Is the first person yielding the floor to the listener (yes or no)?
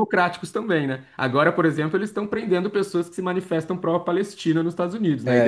yes